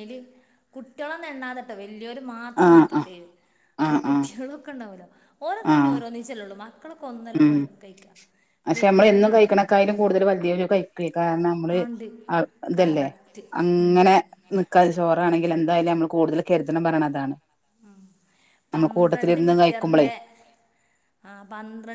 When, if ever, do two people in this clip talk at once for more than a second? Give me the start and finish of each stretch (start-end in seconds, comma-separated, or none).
18.7-20.1